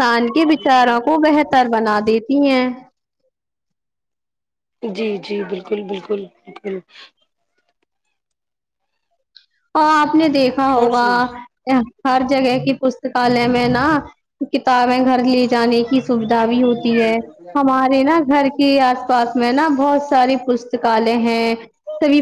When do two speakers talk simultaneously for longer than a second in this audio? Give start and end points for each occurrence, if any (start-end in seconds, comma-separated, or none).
none